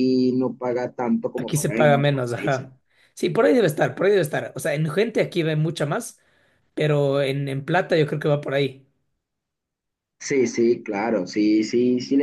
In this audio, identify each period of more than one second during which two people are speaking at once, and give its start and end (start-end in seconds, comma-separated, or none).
1.4-2.7